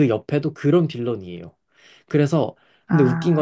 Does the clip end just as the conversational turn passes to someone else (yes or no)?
no